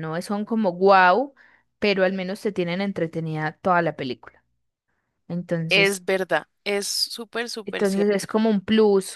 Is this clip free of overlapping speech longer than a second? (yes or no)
yes